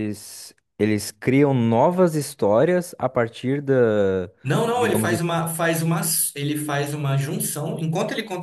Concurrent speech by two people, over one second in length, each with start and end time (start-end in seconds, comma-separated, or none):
none